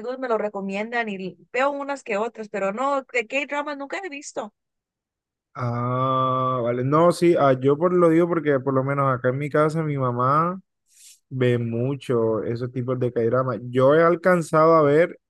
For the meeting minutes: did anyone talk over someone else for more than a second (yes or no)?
no